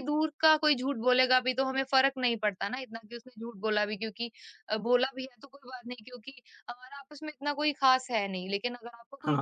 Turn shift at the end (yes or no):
no